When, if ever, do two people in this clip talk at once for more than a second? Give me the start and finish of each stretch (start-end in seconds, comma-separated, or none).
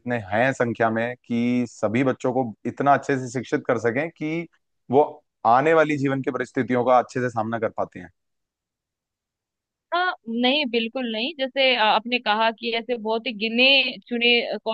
none